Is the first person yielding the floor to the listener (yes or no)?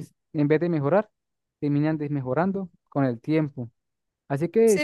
yes